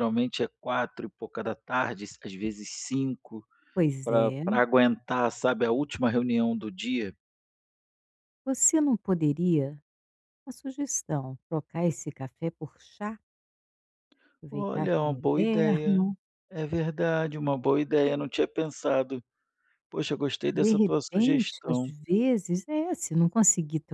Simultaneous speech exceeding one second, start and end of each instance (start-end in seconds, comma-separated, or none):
14.5-16.1, 20.5-21.9